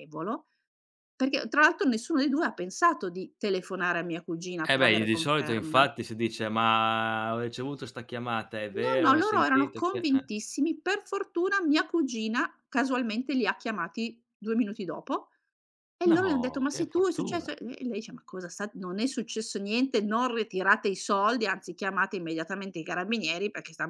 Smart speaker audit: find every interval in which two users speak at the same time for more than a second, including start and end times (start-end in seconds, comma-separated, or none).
4.6-5.9, 8.7-10.3, 16.1-17.6